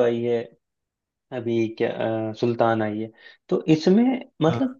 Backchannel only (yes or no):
yes